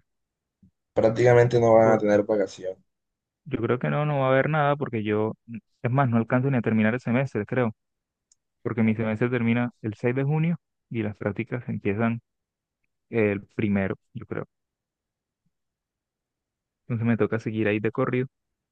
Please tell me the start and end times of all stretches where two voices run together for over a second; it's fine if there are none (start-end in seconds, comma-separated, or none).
none